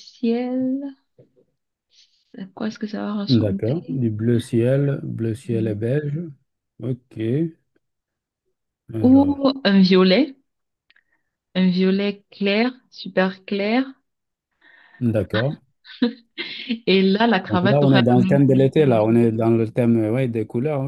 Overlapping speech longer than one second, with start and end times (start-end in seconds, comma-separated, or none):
17.5-19.4